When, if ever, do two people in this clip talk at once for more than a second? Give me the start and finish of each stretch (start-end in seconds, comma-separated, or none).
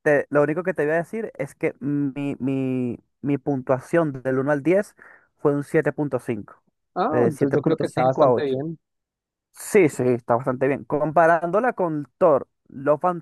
7.1-8.5